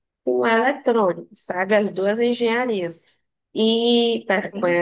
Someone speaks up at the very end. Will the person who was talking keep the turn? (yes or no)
yes